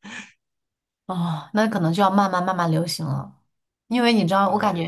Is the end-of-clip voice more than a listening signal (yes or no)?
no